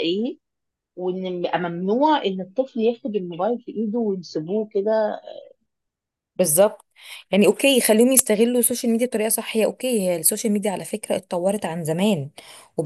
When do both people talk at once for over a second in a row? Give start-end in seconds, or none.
none